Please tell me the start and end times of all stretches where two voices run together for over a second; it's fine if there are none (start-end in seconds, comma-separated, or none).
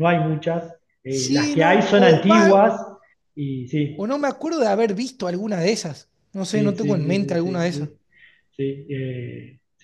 1.1-2.5, 6.5-7.9